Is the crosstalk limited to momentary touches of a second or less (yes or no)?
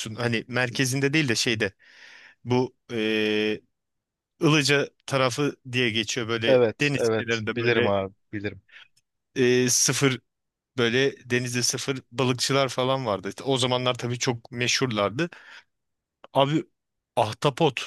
no